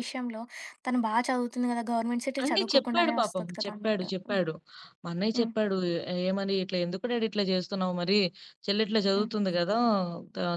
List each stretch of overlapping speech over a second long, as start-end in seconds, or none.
2.4-4.4